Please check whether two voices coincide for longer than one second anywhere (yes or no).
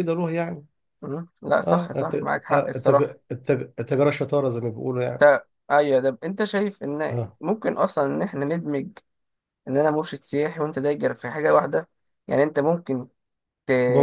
yes